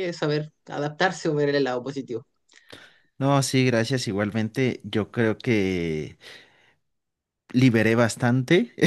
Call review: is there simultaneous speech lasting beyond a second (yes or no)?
no